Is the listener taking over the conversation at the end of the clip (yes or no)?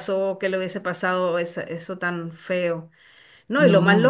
no